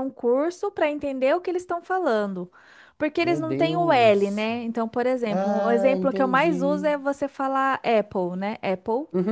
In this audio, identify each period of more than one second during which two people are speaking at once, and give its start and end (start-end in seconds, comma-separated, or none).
3.2-4.5, 5.3-6.9